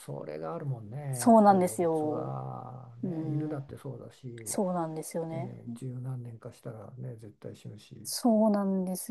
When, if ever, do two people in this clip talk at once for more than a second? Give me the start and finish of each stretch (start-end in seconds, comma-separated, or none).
1.1-2.3